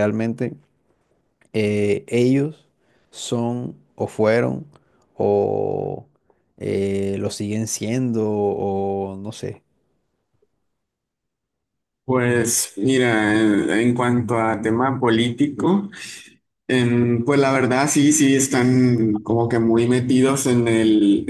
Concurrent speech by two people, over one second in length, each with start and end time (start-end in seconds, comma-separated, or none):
none